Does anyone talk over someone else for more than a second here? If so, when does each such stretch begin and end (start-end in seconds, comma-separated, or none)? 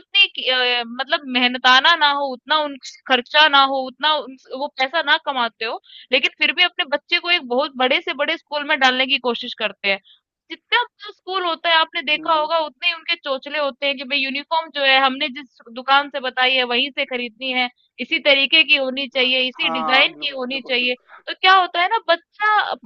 19.2-21.2